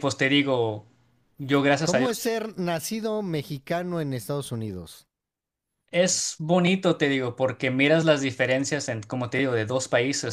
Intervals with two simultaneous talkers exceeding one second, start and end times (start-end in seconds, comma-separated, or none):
none